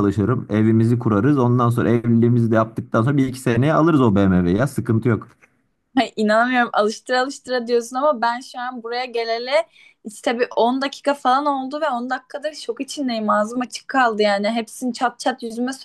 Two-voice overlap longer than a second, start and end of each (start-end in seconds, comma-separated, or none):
none